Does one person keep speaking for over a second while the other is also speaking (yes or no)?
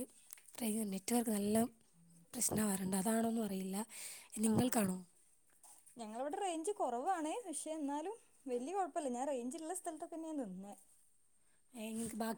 no